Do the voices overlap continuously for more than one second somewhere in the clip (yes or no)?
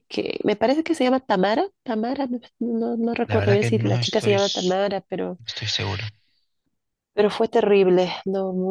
yes